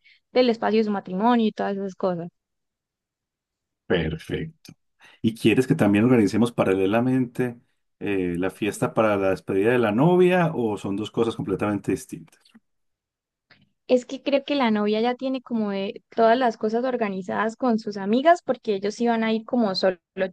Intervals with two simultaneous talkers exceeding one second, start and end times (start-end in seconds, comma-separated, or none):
none